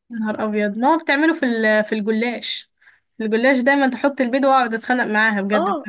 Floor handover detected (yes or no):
yes